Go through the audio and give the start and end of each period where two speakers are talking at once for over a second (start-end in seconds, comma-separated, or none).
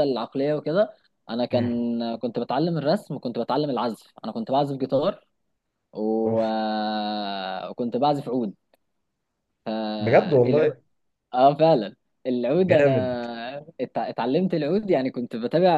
none